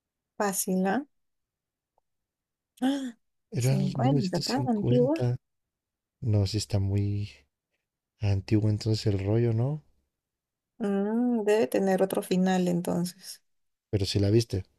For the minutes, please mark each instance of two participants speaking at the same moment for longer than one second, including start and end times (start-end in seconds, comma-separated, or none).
3.6-5.2